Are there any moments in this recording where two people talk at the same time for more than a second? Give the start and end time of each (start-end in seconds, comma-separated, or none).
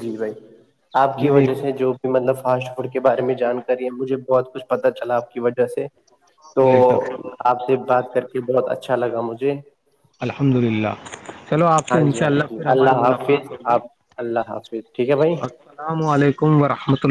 11.9-13.8